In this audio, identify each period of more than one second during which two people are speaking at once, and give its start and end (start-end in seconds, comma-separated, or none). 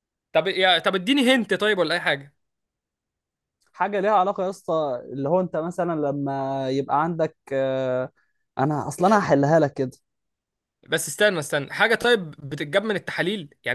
none